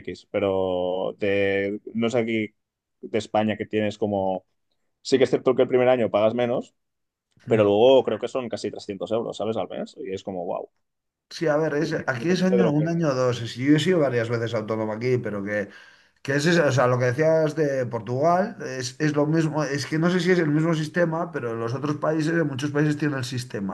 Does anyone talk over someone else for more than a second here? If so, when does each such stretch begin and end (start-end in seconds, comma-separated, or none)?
11.8-13.0